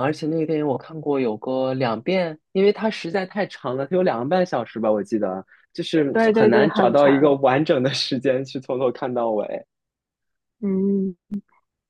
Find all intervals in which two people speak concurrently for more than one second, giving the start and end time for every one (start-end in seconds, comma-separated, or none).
6.1-7.3